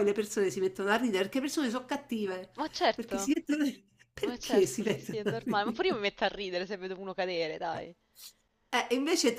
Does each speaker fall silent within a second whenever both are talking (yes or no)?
no